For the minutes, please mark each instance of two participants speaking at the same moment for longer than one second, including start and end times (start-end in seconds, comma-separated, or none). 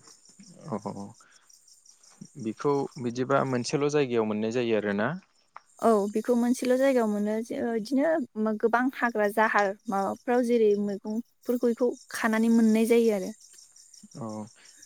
none